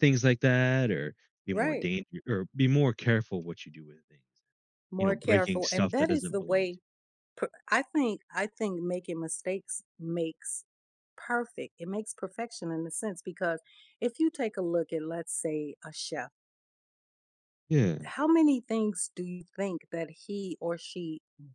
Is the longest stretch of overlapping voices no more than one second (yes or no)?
no